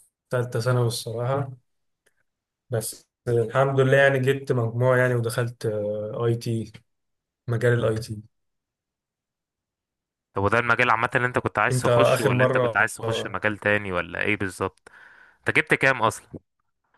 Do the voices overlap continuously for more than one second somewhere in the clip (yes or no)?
yes